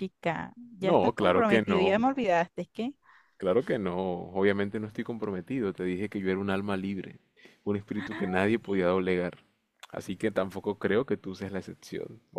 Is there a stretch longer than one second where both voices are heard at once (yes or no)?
yes